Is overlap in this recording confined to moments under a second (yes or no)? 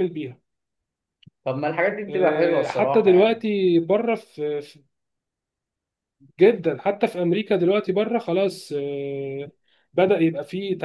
no